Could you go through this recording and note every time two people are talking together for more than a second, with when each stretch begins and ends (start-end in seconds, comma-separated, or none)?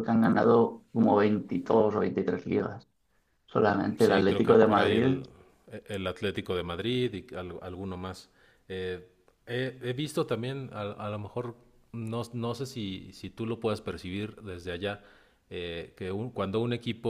4.0-5.2